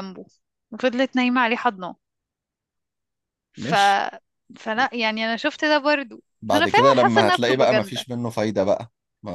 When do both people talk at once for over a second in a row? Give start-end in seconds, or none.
6.4-8.0